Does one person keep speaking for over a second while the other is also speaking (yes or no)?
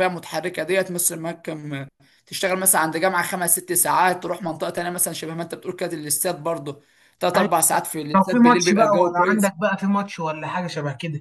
yes